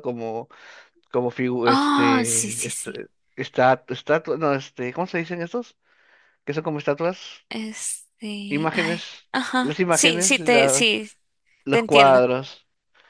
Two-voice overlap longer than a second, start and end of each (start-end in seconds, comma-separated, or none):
8.5-10.9